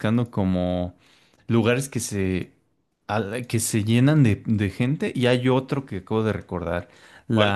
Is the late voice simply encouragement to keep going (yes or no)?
yes